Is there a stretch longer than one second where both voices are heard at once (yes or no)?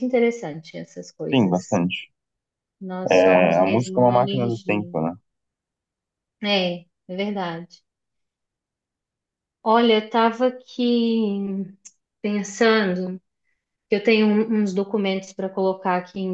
yes